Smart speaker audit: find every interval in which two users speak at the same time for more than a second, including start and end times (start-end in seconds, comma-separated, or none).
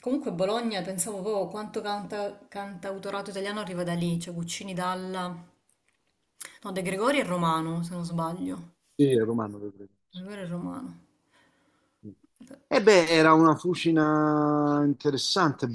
none